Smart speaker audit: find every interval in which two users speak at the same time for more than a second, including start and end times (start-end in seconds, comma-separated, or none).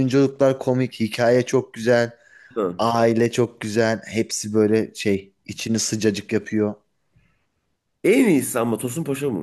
none